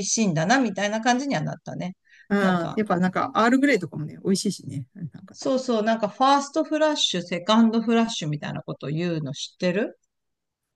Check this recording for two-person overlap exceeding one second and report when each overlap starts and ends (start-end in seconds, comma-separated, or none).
none